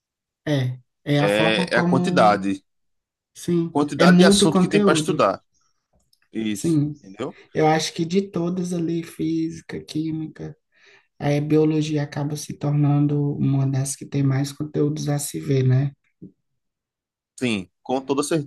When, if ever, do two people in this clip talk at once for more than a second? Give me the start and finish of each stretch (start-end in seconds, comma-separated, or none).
1.2-2.5, 3.7-5.2